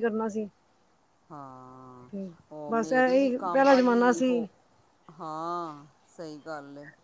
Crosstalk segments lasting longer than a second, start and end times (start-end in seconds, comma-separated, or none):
2.7-4.5